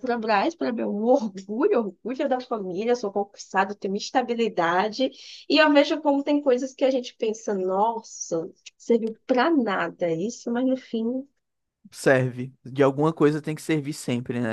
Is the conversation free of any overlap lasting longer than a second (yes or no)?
yes